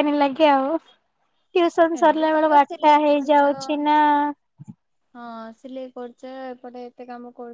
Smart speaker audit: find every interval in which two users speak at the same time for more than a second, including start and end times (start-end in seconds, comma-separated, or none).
2.0-3.5